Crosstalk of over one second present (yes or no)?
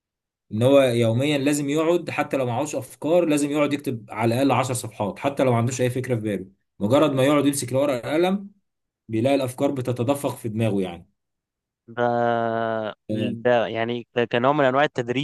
no